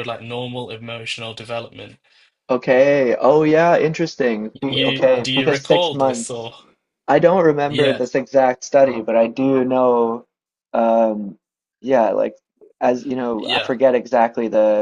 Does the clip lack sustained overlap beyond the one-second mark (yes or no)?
no